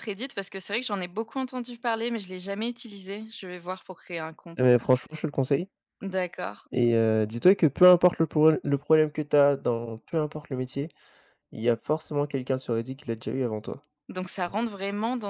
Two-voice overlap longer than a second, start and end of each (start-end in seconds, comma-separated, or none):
none